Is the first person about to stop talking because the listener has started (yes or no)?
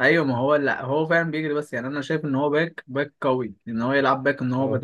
no